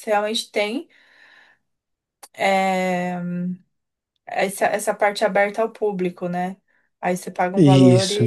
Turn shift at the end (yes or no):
no